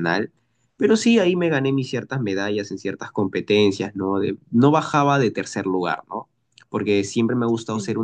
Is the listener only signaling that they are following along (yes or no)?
yes